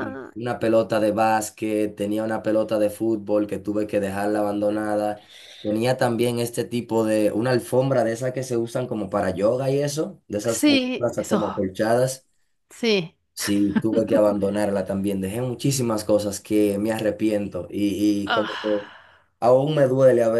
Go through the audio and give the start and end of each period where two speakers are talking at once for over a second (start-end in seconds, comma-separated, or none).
10.4-11.7